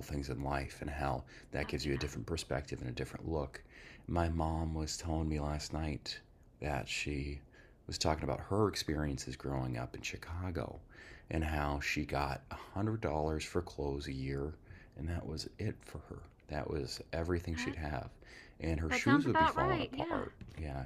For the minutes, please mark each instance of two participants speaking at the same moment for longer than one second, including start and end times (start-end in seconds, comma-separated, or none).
18.9-20.2